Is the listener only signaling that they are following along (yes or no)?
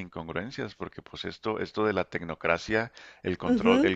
yes